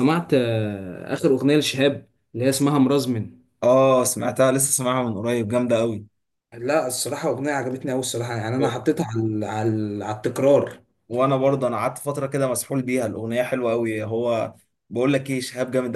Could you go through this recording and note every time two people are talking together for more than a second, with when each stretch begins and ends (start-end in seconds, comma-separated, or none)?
none